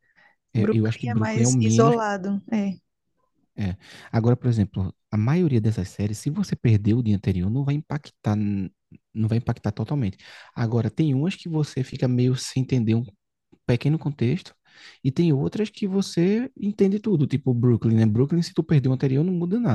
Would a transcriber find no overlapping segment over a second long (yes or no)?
no